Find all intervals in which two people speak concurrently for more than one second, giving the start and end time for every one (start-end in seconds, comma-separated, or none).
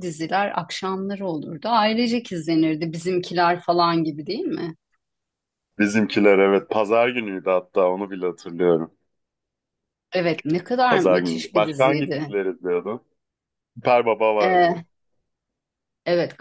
10.9-12.3